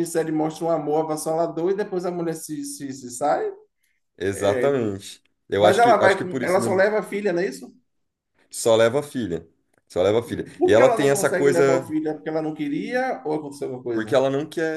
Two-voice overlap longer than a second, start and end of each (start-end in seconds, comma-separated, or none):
5.6-6.8, 10.2-11.9